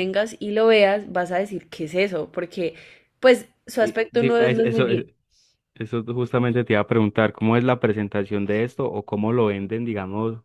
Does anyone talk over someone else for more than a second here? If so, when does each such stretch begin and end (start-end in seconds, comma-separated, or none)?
3.8-5.0